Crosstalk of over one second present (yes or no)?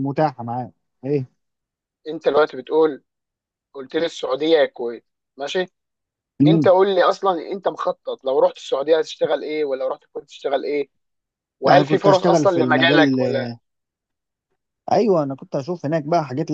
yes